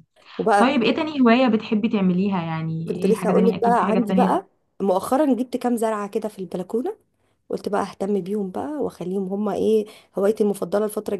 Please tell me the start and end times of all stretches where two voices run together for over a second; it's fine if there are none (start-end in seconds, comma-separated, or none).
2.9-4.4